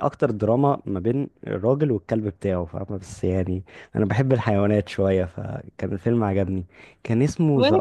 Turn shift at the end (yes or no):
no